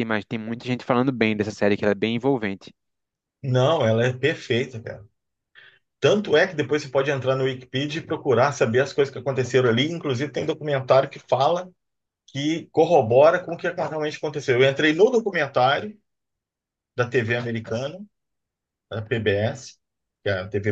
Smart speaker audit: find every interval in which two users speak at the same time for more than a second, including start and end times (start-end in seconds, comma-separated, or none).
none